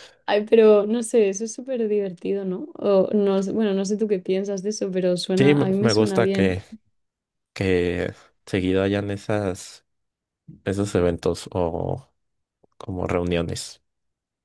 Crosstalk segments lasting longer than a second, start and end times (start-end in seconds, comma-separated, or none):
5.4-6.6